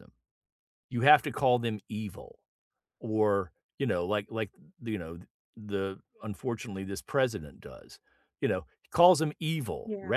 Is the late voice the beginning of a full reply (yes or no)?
no